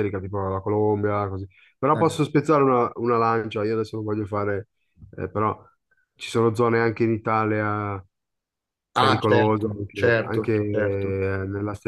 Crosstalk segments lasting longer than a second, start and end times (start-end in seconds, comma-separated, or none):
9.0-11.2